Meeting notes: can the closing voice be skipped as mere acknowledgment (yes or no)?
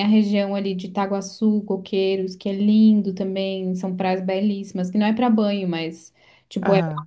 yes